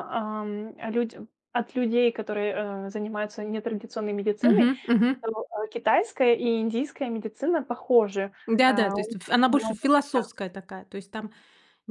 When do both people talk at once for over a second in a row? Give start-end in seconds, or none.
8.5-10.3